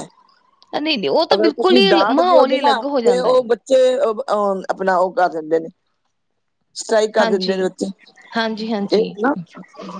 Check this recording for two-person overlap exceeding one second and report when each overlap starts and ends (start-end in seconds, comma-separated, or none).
1.3-3.5